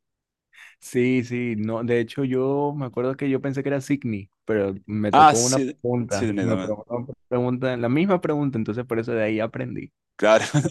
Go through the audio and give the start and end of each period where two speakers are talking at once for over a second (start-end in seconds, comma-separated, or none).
5.1-6.8